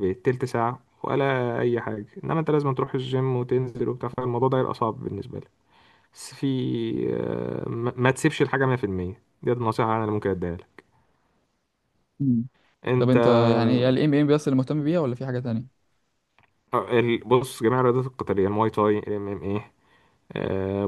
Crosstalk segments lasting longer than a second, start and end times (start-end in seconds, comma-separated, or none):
none